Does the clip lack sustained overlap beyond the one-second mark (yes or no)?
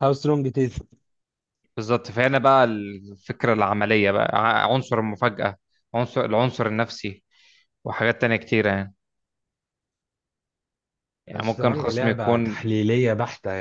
no